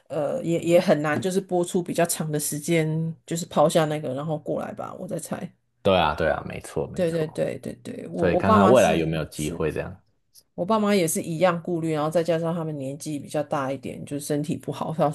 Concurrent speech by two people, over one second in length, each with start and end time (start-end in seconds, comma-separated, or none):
8.2-9.6